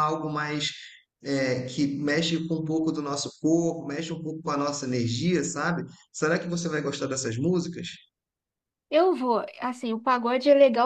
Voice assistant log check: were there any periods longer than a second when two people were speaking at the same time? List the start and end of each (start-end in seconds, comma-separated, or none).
none